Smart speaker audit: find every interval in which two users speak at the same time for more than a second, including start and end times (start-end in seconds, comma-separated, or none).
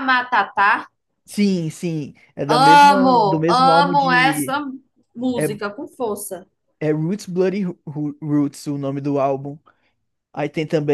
2.5-4.6